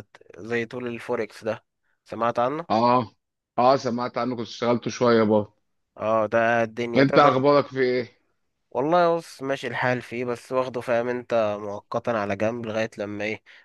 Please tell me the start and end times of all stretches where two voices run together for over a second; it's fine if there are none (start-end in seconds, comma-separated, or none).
none